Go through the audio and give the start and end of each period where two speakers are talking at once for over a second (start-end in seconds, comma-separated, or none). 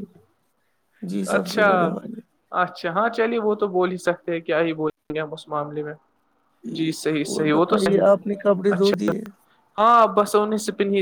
7.3-8.9